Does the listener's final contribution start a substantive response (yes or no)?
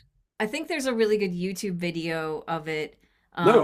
yes